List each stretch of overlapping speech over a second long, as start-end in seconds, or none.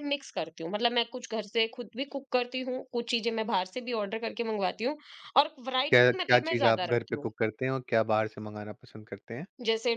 5.9-7.3